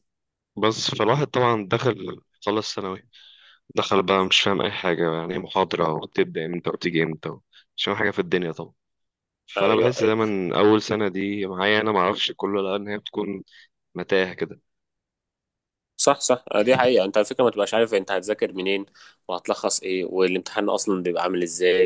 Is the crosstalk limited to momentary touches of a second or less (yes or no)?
yes